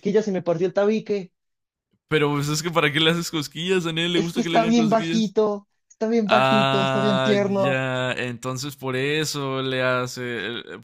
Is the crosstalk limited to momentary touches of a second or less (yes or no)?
no